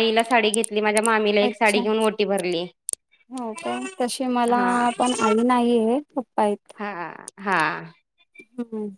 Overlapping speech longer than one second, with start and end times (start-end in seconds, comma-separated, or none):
none